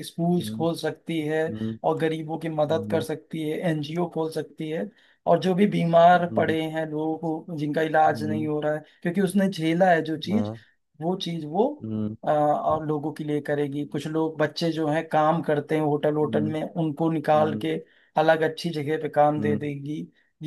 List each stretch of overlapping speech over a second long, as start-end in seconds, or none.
none